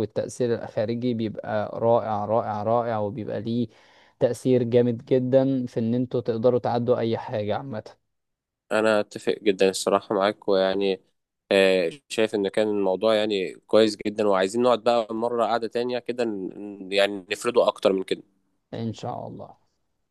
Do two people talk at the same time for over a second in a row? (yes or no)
no